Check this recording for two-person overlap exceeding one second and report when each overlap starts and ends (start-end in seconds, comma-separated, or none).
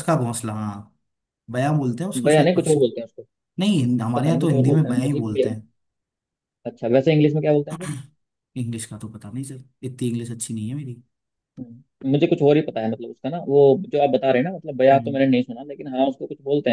4.2-5.5